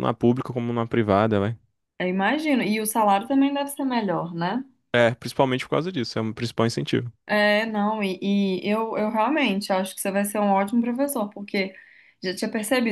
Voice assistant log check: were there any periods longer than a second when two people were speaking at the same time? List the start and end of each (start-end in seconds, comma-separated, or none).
none